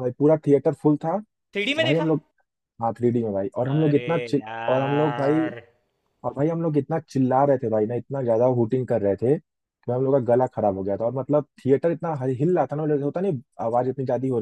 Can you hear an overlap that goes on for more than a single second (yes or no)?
yes